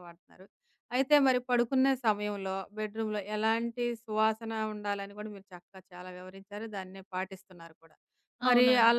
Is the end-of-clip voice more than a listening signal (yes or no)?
no